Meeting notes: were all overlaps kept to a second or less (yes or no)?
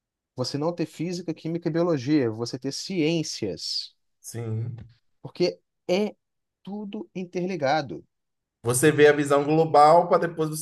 yes